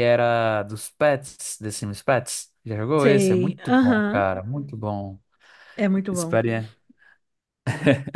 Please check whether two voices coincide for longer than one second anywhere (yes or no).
yes